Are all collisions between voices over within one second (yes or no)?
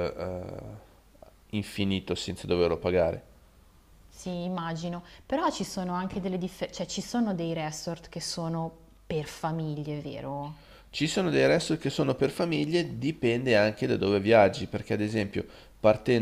yes